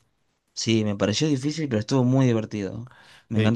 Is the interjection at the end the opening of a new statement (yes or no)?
yes